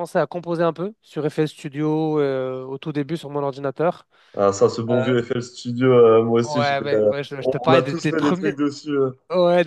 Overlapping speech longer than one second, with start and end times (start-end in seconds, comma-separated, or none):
6.4-8.6